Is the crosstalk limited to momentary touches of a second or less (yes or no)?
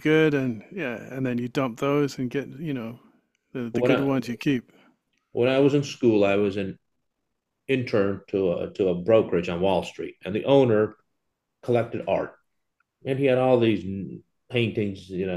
yes